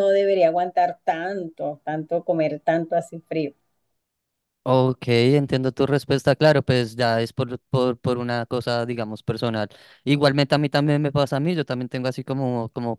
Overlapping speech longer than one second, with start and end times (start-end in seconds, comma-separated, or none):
none